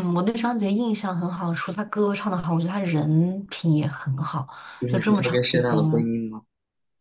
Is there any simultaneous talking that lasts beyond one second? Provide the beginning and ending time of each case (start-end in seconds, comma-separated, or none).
4.9-6.1